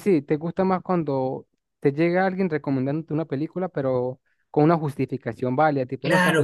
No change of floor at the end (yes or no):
no